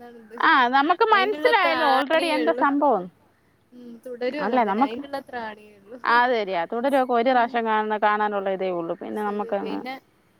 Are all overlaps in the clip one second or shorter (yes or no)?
no